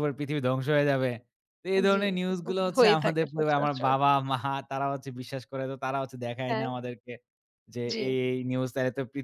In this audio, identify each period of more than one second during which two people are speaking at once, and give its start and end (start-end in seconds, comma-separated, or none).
1.9-3.9